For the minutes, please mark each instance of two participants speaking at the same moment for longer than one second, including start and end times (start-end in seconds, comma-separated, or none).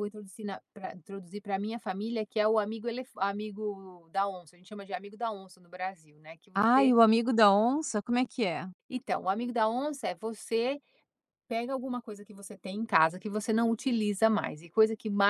none